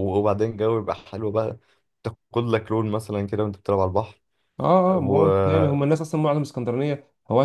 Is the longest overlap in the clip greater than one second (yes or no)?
no